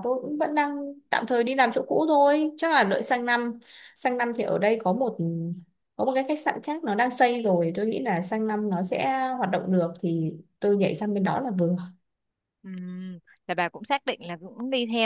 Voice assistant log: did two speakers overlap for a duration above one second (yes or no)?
no